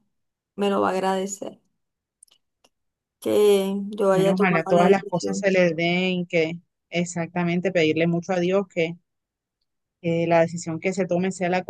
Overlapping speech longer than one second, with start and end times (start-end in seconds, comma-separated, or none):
4.1-5.5